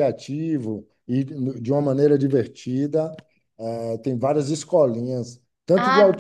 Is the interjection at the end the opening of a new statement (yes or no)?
yes